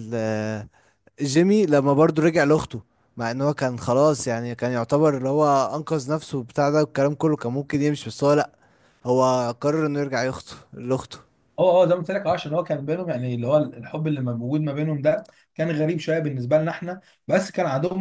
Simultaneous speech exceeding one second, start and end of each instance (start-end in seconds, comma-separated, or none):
none